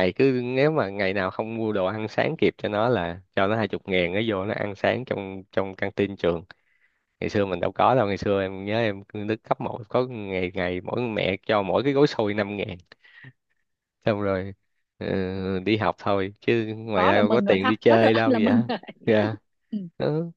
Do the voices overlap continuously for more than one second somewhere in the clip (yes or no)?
yes